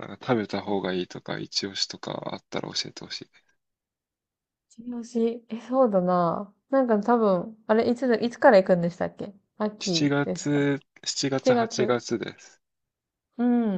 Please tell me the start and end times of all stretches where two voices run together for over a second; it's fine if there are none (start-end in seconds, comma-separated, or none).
9.8-12.0